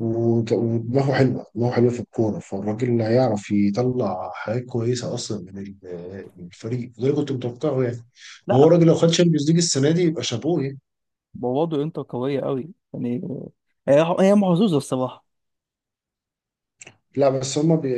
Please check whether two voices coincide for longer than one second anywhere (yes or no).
no